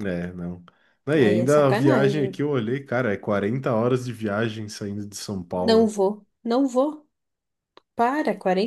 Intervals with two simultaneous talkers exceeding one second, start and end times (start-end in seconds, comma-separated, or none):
1.2-2.4